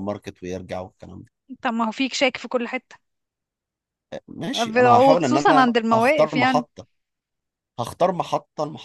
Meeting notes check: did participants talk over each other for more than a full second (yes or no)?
yes